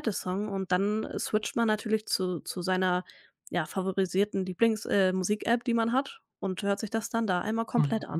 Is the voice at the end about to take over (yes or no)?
yes